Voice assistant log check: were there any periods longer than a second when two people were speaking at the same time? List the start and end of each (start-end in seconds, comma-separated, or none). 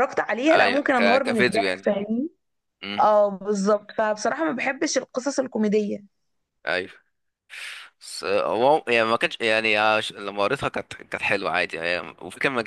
0.5-1.9